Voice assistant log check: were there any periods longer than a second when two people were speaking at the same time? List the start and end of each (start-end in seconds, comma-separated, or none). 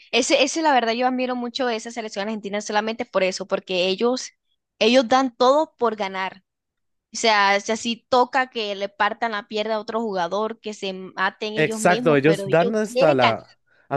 11.6-13.4